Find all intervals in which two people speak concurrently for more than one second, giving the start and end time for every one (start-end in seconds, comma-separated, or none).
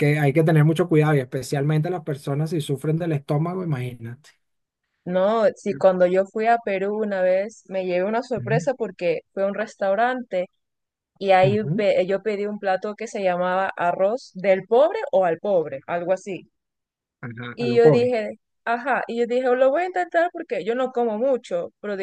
none